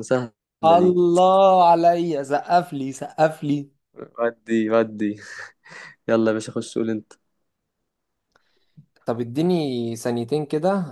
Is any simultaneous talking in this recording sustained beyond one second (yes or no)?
no